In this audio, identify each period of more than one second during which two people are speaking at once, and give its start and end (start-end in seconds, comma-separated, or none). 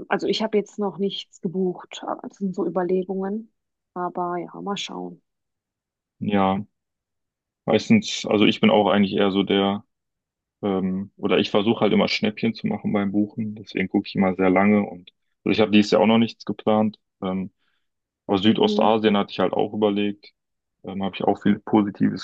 none